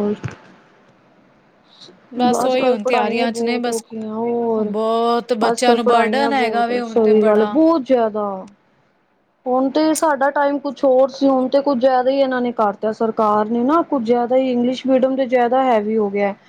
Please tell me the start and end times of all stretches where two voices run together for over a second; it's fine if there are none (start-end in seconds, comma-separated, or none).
2.4-3.8, 5.5-7.5